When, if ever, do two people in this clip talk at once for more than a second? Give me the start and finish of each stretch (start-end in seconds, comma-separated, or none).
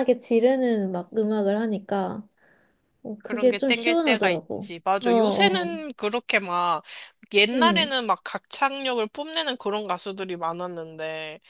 3.3-5.7